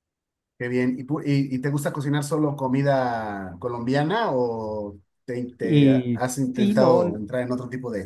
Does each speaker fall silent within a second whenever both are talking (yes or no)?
no